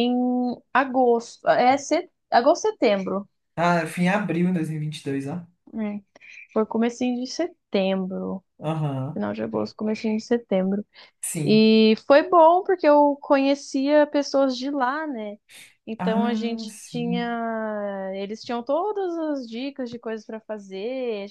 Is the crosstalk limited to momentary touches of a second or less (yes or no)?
no